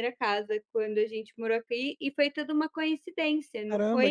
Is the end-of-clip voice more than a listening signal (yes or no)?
yes